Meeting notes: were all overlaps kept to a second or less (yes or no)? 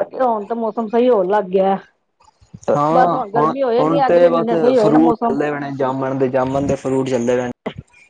no